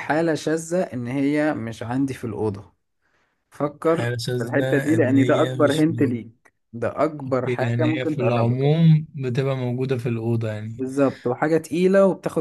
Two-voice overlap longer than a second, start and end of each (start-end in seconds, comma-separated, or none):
3.9-6.2, 7.3-8.7